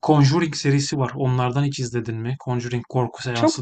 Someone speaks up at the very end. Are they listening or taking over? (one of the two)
taking over